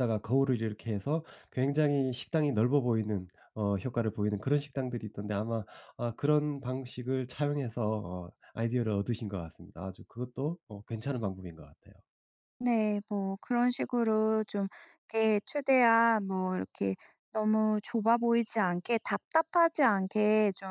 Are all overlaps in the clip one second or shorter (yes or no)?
yes